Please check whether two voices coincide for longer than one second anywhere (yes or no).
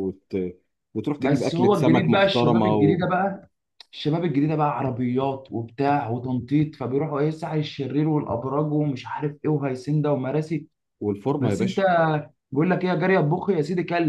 yes